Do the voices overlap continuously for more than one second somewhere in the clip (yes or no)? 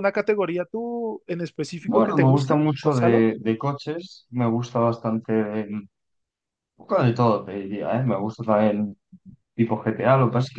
yes